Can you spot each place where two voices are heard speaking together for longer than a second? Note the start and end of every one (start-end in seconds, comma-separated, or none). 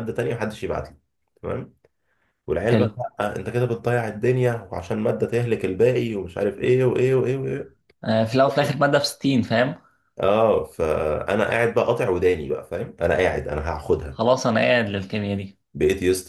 none